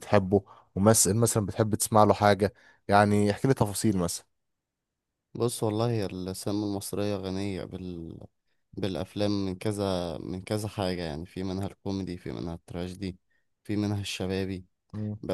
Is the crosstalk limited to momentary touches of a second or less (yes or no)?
yes